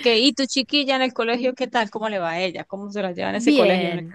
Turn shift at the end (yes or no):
yes